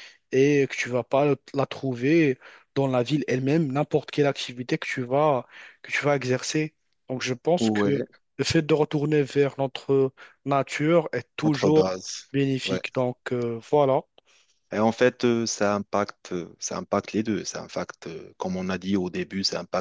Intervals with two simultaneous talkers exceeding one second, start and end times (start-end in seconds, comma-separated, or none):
none